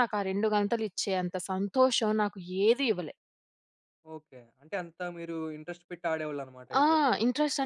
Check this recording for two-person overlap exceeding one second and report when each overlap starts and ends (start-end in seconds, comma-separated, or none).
none